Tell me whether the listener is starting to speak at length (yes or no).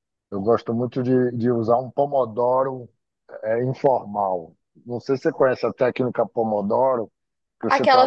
yes